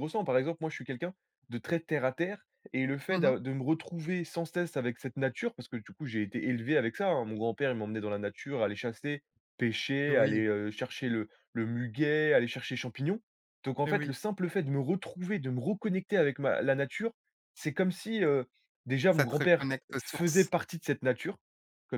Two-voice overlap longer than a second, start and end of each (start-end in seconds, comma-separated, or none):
19.1-20.5